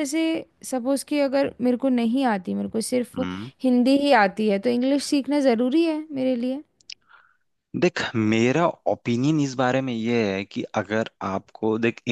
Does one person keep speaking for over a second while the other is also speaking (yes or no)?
no